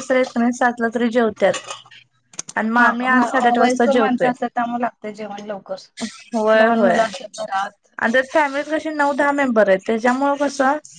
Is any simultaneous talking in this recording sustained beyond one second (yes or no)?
yes